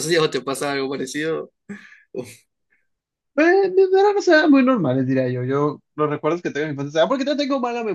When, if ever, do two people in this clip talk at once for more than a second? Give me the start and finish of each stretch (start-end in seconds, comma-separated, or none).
none